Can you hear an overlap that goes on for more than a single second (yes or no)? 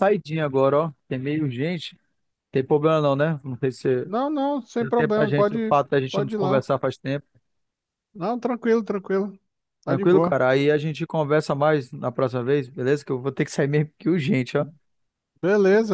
yes